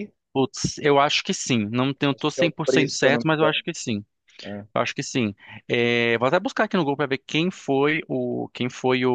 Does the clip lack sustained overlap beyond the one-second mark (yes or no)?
no